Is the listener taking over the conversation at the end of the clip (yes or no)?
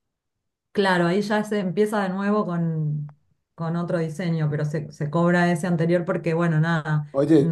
yes